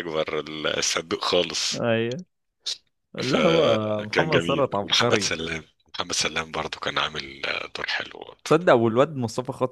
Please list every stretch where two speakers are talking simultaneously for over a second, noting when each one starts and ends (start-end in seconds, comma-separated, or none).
3.2-5.3